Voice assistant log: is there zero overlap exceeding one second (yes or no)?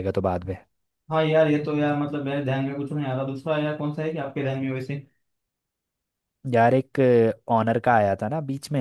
yes